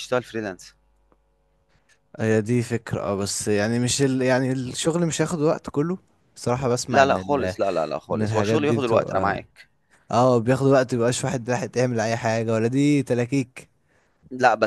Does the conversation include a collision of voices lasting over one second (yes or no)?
yes